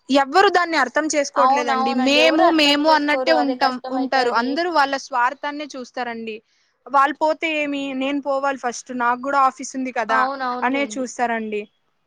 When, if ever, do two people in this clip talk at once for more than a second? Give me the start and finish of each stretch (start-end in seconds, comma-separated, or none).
1.4-4.5